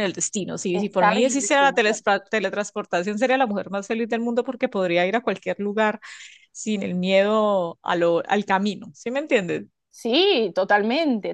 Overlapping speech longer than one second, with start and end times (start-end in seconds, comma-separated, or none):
0.7-2.0